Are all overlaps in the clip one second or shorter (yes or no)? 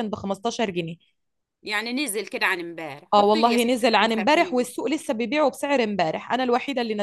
no